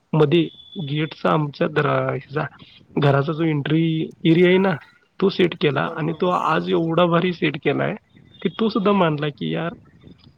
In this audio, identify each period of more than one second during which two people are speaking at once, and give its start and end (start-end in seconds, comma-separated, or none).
5.7-7.2